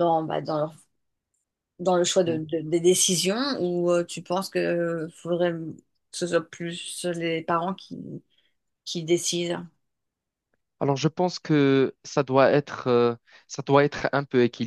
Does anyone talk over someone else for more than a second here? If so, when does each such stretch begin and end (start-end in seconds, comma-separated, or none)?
none